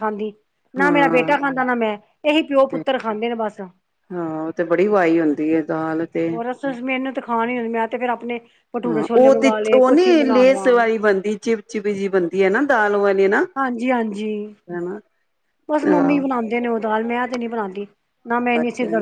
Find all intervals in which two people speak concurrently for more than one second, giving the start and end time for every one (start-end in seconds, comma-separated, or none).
8.9-10.7